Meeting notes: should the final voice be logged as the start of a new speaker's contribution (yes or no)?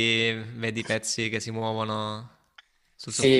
yes